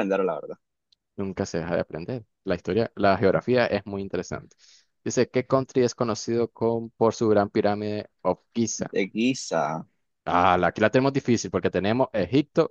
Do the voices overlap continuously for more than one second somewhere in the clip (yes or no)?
no